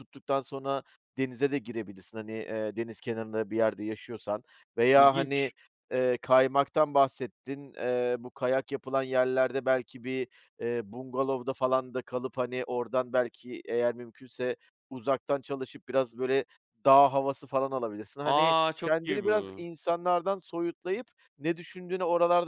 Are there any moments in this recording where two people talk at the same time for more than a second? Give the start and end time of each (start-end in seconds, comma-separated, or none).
18.2-19.6